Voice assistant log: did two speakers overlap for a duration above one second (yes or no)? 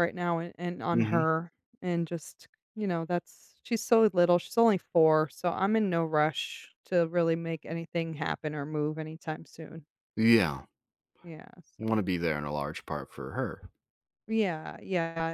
no